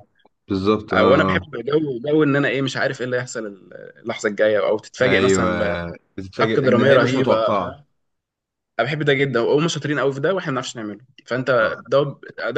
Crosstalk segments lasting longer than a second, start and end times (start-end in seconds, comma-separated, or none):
6.4-7.8